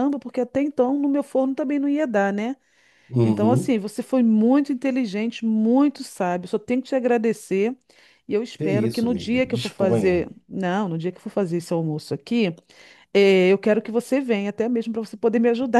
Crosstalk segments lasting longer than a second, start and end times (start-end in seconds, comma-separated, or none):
8.6-10.3